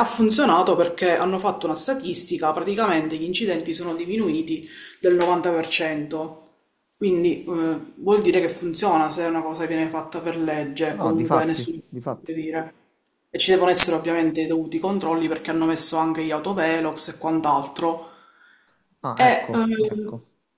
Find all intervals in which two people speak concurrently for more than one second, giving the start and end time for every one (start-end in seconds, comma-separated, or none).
10.9-12.3